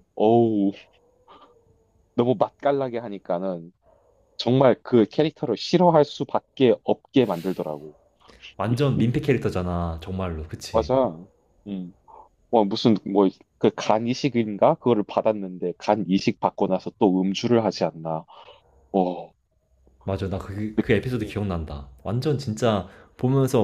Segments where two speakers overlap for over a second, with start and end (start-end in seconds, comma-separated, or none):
none